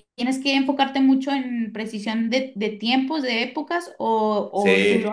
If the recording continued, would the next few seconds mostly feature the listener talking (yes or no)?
yes